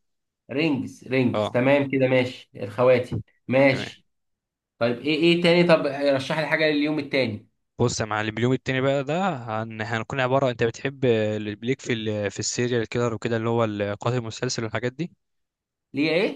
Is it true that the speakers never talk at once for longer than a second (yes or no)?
yes